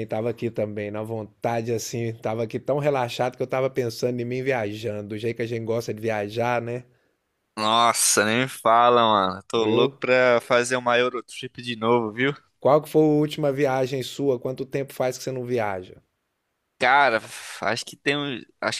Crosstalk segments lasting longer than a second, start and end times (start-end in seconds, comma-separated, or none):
none